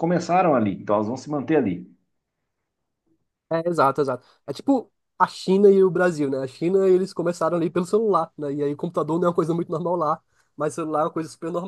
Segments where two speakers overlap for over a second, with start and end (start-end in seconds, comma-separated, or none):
none